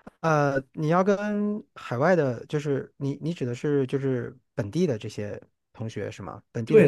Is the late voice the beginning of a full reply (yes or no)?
yes